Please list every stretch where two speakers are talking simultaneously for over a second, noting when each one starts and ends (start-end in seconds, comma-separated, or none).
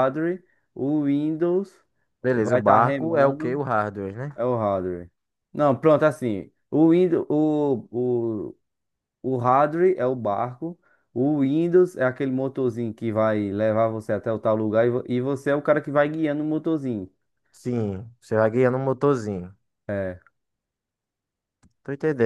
2.4-3.6